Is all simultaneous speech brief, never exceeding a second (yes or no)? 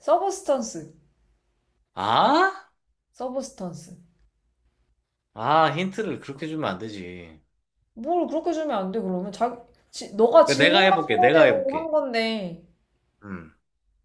no